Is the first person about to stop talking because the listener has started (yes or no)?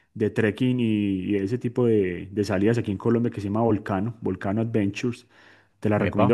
no